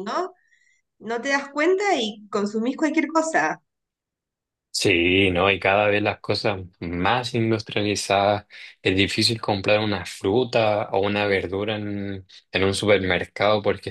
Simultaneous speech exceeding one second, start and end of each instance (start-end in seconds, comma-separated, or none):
none